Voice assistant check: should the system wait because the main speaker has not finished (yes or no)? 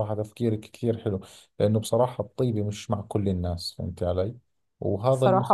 yes